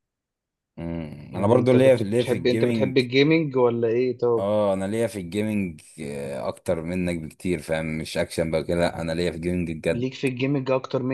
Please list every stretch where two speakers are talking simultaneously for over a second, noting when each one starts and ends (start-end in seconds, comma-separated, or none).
1.3-3.0